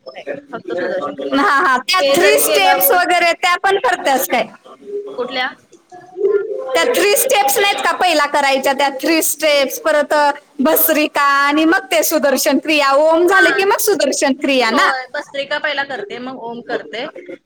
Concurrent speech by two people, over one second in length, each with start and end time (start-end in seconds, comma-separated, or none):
1.4-3.0